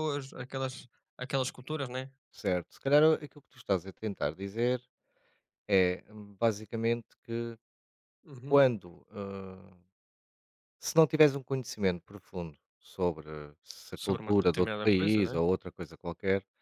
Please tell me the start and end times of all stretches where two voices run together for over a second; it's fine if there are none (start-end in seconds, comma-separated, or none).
13.9-15.4